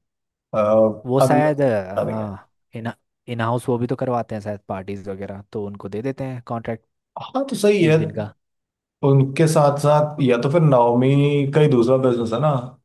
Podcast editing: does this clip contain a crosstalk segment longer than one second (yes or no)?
yes